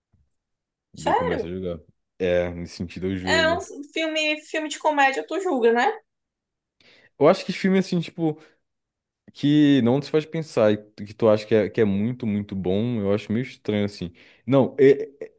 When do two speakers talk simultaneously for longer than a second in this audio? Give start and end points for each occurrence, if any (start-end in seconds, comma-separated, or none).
none